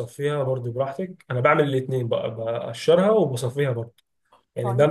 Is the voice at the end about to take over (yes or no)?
no